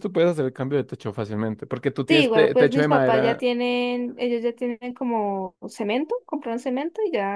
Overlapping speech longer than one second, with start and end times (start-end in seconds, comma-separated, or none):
2.1-3.5